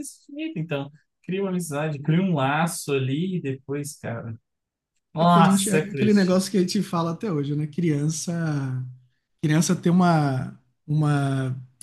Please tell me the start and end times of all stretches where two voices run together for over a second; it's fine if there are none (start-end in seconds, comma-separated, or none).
5.2-6.4